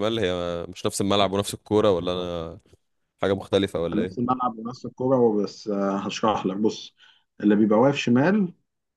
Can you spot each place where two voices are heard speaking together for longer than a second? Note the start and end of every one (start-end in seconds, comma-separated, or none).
none